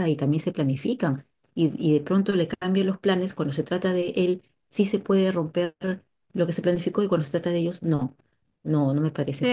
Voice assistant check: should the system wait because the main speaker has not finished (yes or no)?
no